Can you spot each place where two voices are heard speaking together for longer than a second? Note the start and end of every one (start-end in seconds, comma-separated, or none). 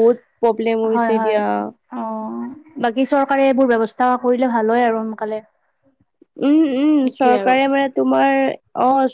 none